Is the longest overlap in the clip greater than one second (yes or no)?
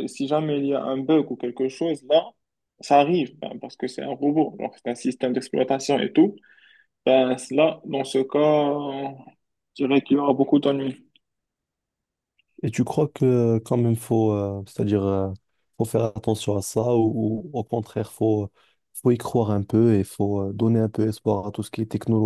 no